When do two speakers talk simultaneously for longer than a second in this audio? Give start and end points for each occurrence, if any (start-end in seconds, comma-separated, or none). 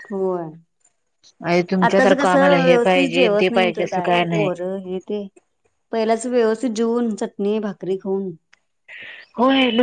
1.9-4.5